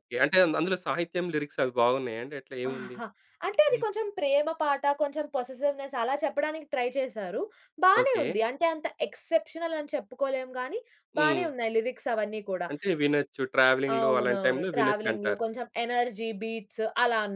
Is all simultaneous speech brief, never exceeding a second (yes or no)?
no